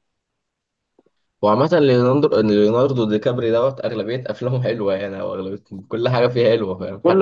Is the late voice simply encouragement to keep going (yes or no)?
yes